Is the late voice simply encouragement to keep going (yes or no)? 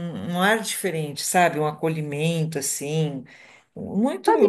no